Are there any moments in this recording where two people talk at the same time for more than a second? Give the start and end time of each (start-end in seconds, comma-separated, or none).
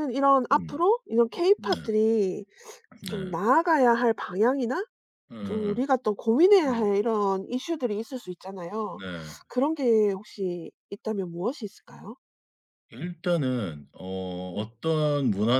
none